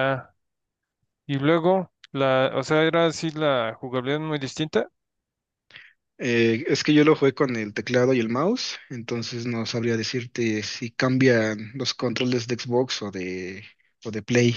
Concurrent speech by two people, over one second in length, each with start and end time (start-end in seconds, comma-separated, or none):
none